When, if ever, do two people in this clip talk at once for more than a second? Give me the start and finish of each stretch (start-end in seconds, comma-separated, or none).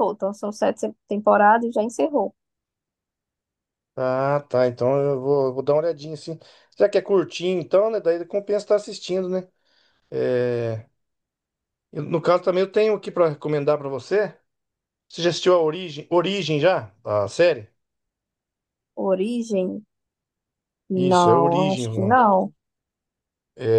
20.9-22.2